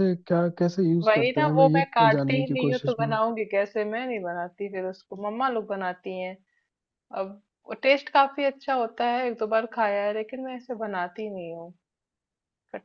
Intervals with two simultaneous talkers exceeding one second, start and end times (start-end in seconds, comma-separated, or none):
1.0-3.2